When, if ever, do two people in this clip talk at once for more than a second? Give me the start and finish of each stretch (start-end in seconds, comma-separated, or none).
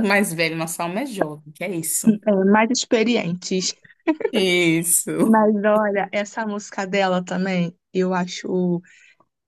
none